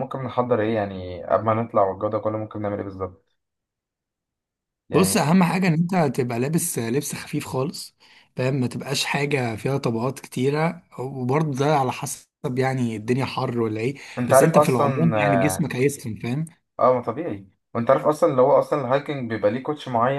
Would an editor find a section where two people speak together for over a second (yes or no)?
yes